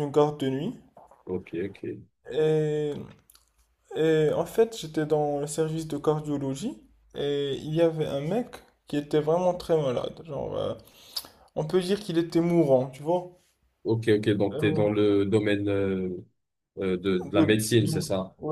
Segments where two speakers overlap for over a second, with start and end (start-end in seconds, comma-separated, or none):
none